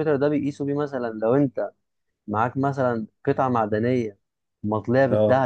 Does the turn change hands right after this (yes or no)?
no